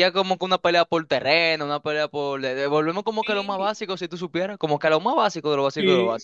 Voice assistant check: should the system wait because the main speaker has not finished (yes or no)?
no